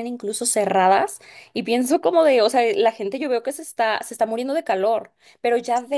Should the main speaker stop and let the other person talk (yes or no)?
no